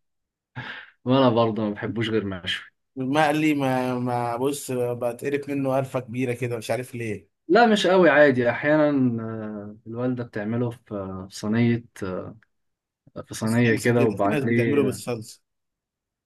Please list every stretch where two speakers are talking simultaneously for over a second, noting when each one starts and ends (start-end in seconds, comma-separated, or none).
13.4-15.0